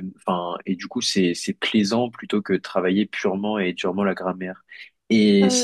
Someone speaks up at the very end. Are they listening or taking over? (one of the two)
listening